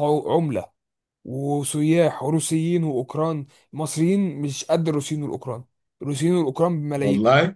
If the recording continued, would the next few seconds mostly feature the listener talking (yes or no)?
no